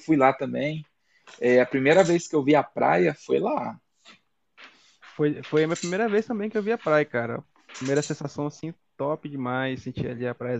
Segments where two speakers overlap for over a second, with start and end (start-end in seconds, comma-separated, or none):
none